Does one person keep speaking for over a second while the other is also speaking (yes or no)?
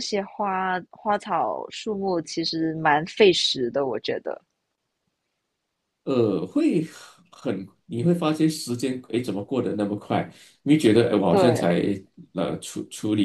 no